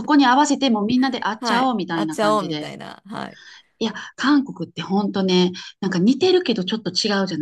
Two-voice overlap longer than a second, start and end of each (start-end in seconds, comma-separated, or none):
1.4-2.7